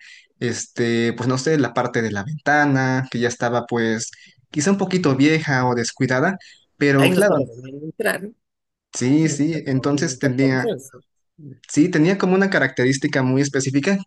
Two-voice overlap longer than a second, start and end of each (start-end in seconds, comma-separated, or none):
9.2-10.7